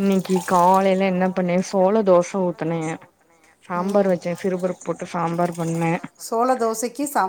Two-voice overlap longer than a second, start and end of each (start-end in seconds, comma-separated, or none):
3.8-5.9